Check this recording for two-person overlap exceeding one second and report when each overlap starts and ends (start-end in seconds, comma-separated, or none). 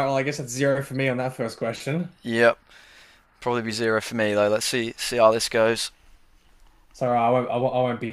none